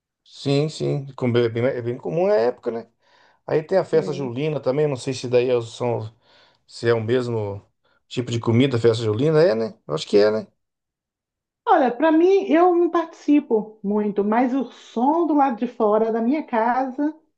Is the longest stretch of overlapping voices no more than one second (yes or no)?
yes